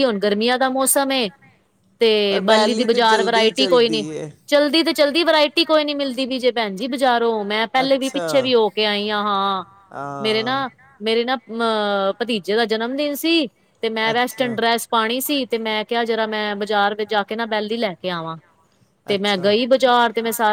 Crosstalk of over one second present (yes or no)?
yes